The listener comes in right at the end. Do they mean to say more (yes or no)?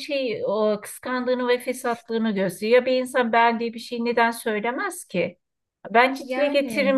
no